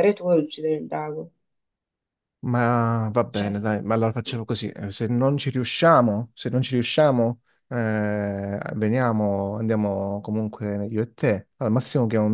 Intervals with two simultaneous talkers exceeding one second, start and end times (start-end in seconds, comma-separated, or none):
none